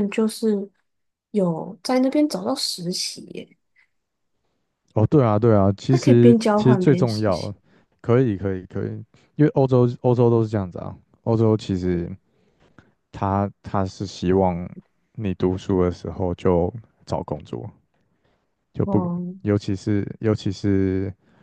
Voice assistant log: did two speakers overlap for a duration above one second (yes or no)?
yes